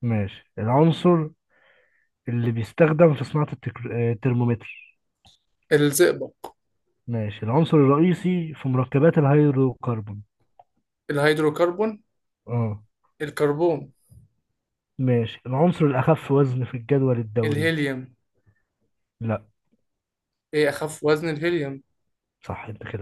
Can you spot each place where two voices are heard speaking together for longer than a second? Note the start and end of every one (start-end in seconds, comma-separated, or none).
none